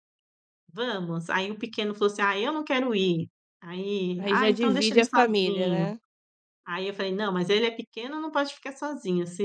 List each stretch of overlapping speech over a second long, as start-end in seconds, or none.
4.2-5.9